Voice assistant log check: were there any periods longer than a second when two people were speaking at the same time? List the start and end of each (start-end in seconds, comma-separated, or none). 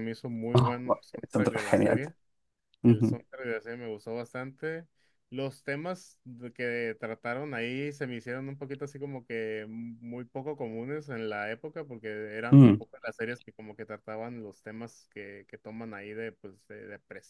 0.5-2.0